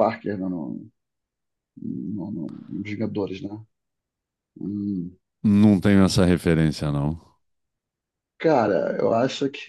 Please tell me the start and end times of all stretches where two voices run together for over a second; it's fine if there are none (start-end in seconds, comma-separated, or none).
none